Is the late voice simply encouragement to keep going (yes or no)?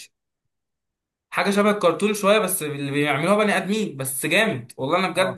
yes